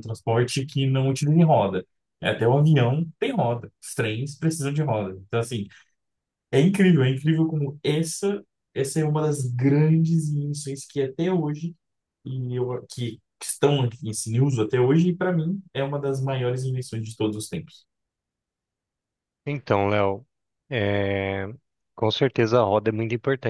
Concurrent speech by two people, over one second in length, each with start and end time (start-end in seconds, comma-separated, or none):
none